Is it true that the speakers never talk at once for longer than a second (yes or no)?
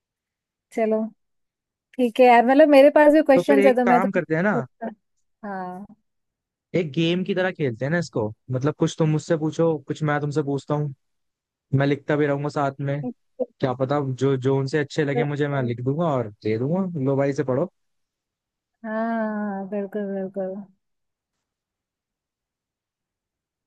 no